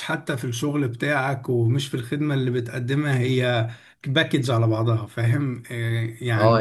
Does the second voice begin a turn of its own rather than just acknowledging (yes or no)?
yes